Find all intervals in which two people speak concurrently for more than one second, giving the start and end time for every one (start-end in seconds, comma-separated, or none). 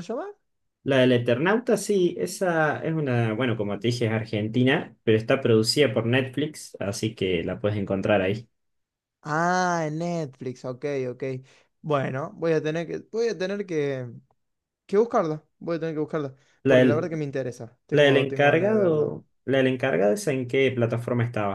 17.9-19.2